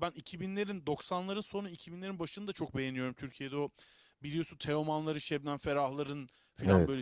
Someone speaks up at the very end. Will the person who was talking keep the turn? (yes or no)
yes